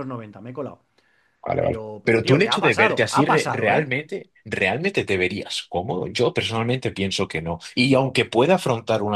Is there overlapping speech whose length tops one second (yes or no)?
yes